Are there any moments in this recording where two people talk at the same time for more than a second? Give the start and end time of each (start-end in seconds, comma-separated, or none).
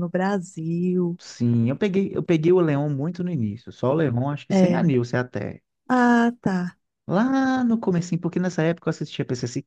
none